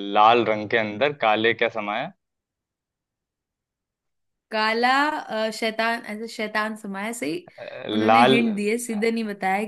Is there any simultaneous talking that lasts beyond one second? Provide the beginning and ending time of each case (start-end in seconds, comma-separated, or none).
none